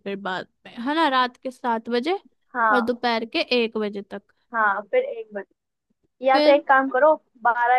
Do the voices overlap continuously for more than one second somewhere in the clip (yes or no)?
no